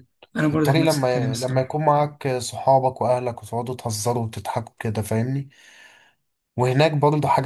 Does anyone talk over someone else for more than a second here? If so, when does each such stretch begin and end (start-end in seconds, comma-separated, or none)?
0.5-1.8